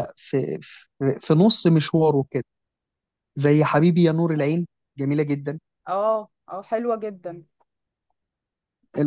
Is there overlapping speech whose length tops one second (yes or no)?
no